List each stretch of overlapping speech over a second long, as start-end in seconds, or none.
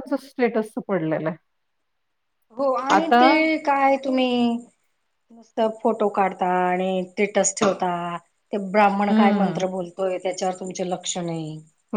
none